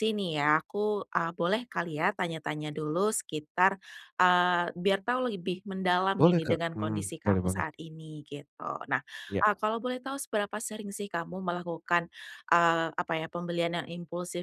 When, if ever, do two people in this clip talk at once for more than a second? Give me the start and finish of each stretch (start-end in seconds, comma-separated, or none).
6.2-7.7